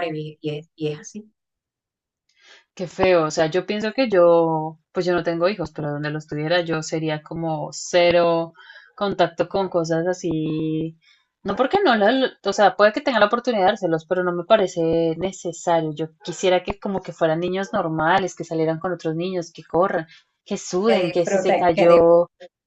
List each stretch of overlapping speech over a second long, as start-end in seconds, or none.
20.9-22.1